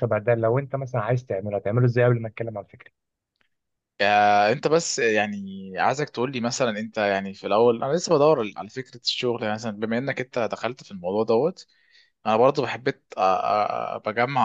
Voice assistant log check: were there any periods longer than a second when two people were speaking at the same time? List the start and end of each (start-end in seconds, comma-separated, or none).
none